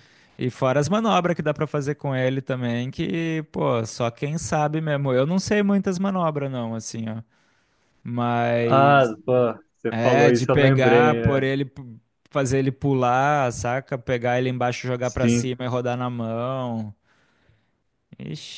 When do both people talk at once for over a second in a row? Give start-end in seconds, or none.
9.9-11.5